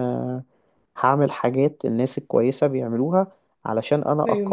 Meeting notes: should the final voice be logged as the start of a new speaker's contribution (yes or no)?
no